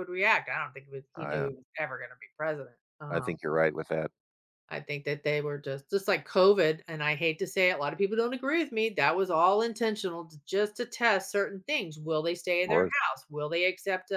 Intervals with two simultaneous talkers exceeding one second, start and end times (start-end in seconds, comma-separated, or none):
none